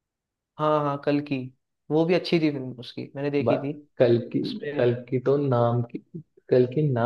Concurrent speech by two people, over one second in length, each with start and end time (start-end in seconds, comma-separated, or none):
none